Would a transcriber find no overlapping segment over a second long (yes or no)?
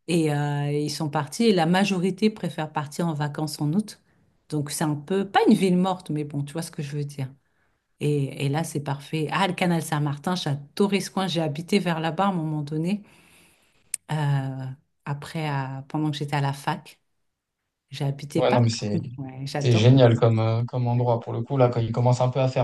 yes